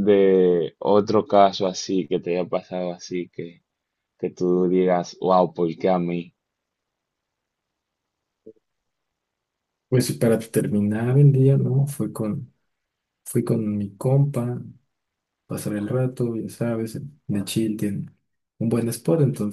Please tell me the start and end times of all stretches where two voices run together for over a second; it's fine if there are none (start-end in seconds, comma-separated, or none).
none